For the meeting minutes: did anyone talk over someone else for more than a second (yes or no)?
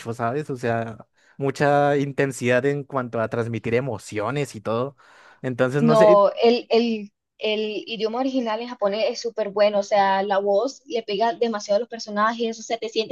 no